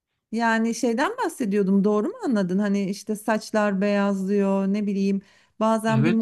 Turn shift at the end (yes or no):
no